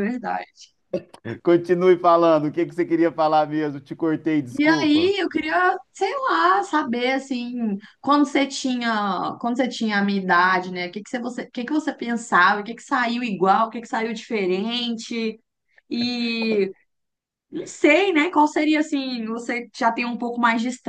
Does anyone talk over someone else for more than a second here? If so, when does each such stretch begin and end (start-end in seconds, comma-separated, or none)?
none